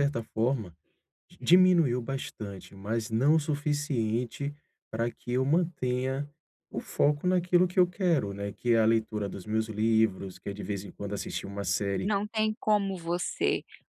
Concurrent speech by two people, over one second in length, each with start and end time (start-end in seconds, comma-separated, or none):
none